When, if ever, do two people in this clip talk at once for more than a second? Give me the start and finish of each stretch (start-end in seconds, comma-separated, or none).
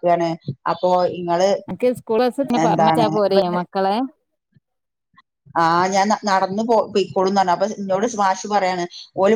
none